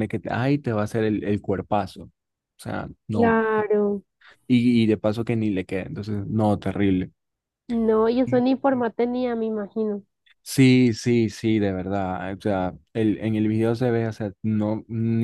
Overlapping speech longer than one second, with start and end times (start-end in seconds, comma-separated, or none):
none